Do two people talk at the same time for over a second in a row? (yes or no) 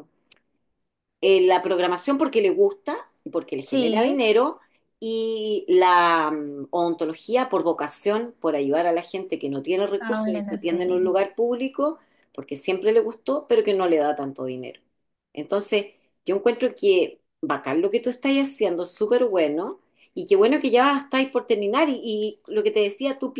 yes